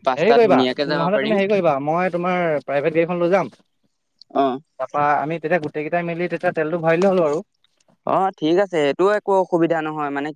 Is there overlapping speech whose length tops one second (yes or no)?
no